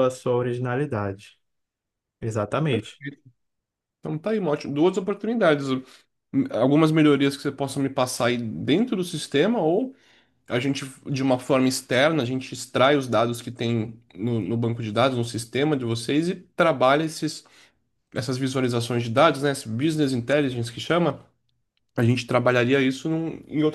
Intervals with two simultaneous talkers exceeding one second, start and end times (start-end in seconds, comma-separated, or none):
none